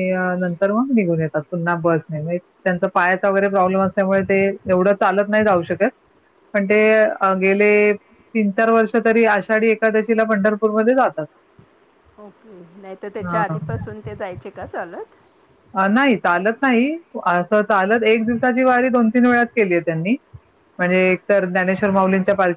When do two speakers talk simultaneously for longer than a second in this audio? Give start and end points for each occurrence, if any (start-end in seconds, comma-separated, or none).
none